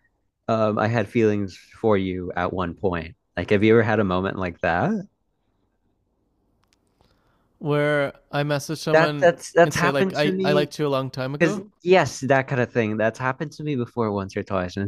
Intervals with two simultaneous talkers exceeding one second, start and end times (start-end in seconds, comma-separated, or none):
8.9-10.7